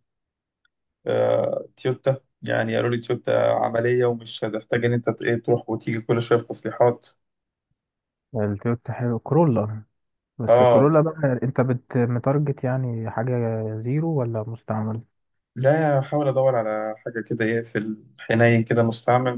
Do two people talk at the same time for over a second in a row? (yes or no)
no